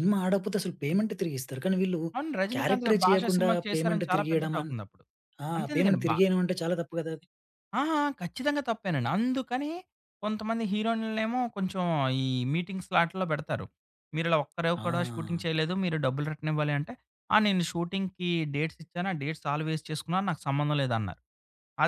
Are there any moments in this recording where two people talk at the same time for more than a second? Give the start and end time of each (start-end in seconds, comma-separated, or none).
2.5-4.7